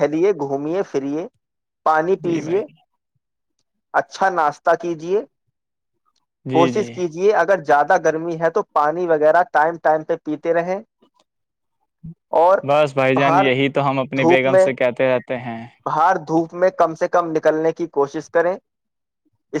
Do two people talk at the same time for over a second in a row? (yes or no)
no